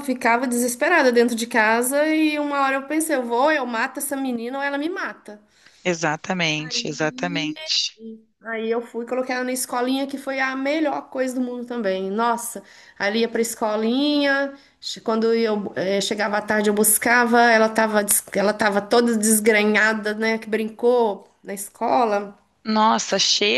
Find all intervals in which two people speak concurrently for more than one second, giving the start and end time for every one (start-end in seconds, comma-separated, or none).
none